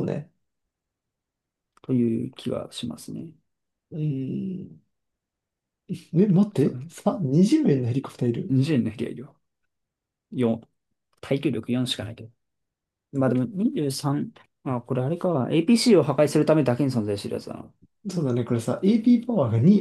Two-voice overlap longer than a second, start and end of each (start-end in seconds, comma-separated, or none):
none